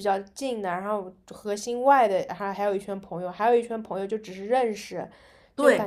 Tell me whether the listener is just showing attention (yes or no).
yes